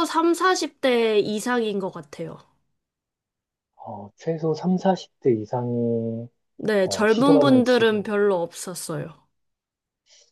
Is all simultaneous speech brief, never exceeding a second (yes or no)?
no